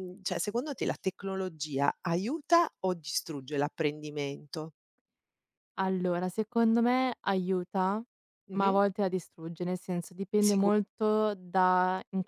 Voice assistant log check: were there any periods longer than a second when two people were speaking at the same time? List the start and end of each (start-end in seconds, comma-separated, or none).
none